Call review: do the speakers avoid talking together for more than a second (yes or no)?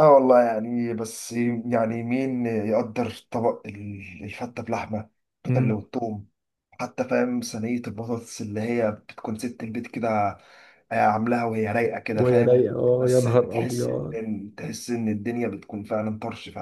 no